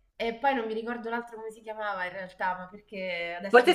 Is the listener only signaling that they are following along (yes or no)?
no